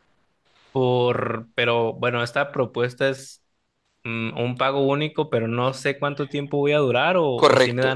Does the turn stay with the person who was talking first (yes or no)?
no